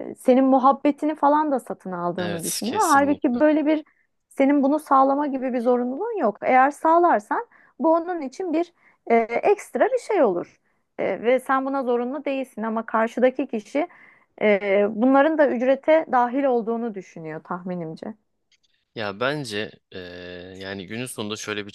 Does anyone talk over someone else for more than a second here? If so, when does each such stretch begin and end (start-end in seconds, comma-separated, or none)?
2.2-3.4